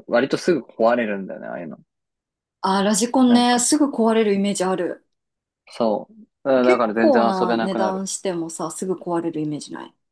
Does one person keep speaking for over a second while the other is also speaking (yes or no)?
yes